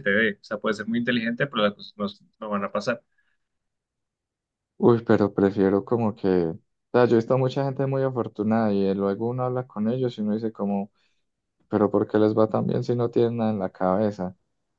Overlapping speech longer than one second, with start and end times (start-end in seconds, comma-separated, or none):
none